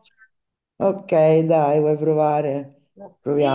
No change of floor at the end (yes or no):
no